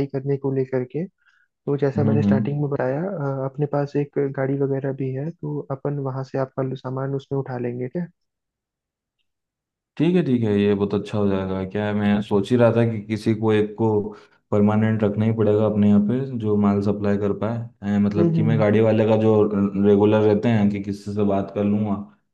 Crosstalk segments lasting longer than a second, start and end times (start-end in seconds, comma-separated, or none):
none